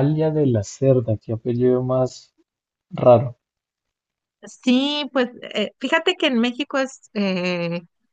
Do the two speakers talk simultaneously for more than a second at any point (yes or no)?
no